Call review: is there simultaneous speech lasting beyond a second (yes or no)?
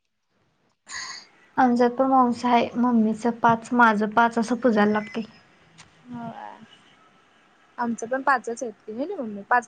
no